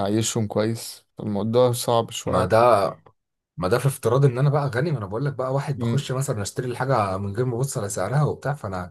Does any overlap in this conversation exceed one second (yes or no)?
no